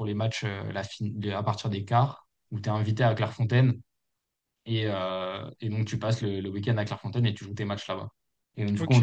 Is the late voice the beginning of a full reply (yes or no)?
no